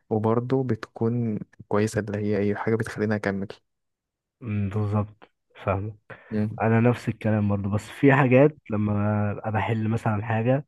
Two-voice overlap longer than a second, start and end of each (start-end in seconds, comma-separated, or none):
none